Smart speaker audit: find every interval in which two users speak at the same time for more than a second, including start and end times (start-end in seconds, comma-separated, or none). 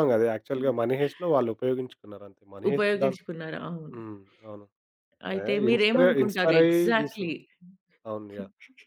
5.4-7.3